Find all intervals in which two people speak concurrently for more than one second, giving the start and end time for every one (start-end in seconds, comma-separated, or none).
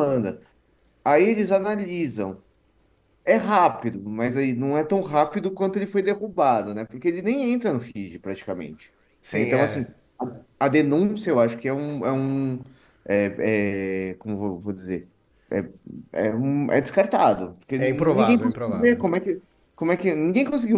17.8-19.0